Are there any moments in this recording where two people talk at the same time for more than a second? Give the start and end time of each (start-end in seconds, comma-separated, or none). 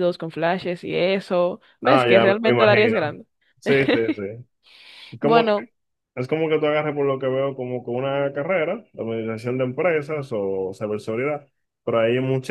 1.8-3.2